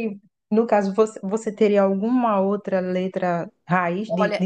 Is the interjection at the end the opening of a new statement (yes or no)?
yes